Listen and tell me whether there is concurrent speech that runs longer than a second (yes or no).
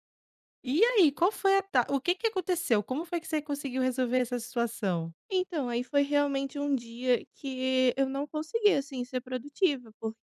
no